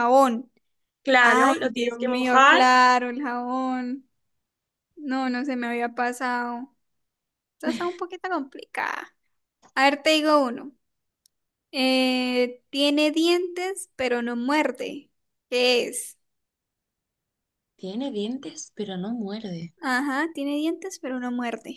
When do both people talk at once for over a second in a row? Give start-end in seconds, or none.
1.2-2.7